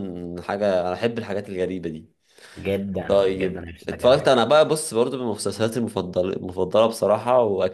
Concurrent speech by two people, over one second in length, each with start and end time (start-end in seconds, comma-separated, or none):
3.1-4.3